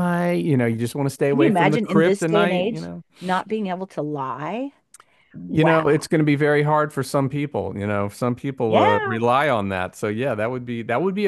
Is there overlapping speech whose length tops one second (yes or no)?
yes